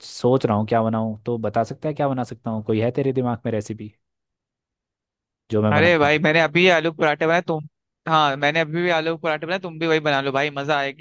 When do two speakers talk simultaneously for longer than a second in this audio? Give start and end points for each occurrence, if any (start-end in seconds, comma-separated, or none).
none